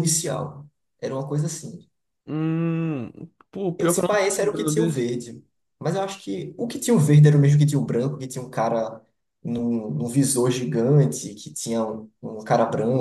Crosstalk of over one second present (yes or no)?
yes